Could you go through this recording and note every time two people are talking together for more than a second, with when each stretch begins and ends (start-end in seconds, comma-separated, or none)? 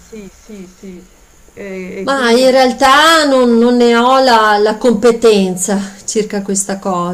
none